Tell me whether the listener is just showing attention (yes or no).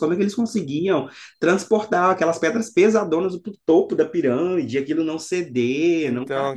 yes